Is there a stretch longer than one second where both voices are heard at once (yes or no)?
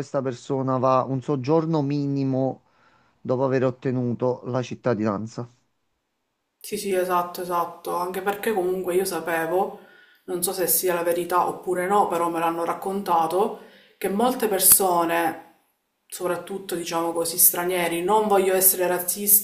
no